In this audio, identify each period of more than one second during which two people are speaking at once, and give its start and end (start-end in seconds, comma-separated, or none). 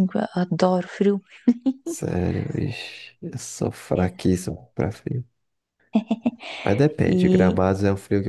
none